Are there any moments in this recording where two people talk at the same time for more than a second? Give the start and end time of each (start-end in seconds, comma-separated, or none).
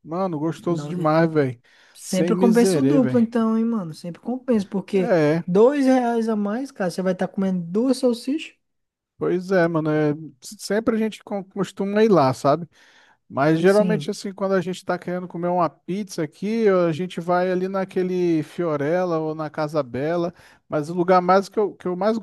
2.0-3.2